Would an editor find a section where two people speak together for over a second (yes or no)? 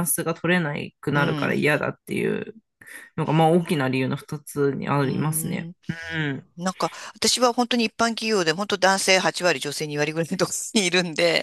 no